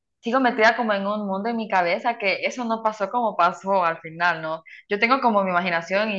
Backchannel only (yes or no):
yes